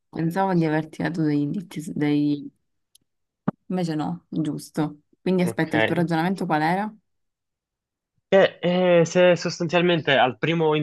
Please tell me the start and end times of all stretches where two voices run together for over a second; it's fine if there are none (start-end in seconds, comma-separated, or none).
none